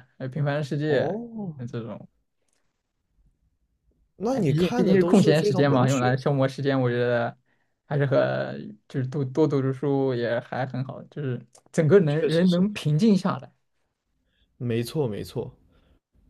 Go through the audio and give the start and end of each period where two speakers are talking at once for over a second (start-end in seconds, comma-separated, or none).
4.3-6.2